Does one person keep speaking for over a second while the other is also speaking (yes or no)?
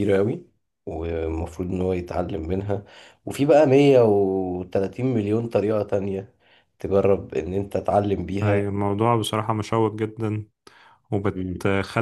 no